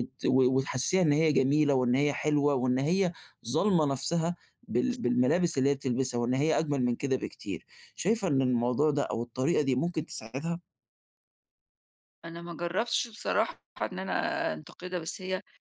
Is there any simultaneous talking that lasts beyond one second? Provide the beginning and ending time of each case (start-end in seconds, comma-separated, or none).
none